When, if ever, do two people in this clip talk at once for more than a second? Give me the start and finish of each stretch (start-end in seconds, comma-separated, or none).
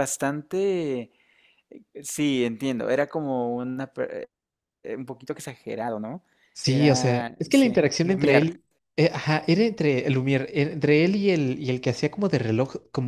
6.7-8.6